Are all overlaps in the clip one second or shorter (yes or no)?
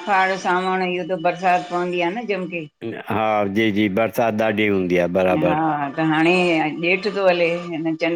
yes